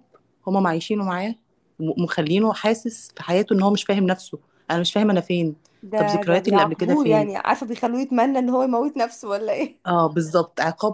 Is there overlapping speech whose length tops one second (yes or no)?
yes